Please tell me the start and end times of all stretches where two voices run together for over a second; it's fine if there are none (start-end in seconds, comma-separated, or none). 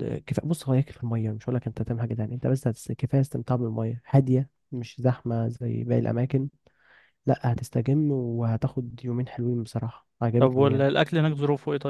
none